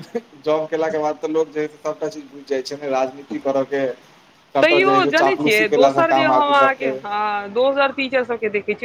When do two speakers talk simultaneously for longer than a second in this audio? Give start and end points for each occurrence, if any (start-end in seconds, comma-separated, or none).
4.6-6.9